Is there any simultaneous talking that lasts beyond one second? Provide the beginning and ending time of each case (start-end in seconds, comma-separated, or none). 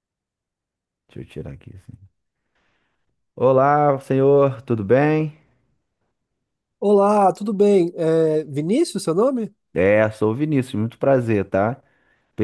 none